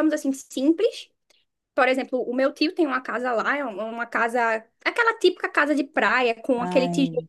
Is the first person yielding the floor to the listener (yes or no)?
no